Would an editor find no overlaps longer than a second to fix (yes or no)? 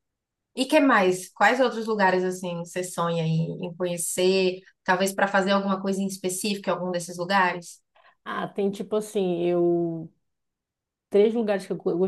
yes